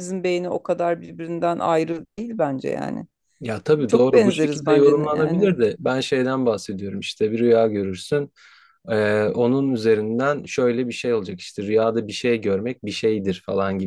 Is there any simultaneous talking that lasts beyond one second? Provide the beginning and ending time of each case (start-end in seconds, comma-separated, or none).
3.9-5.5